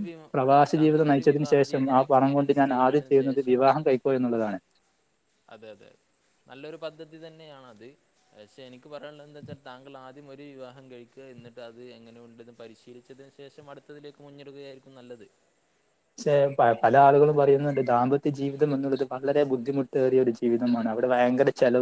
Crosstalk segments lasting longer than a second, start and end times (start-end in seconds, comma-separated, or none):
0.8-3.6